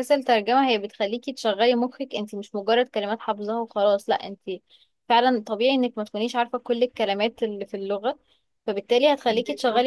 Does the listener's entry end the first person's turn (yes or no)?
no